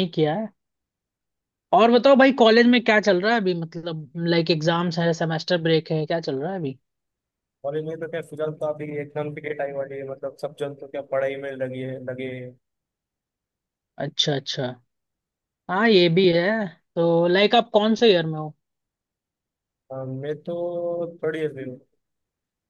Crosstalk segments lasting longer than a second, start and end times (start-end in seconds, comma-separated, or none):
none